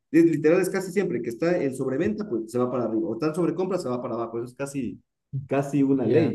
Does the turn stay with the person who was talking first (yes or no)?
no